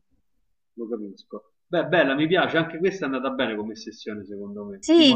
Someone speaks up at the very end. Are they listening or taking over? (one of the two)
taking over